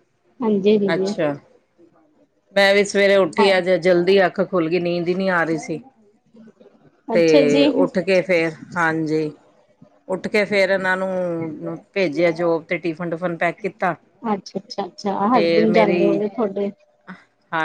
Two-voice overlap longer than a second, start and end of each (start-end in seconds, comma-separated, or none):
none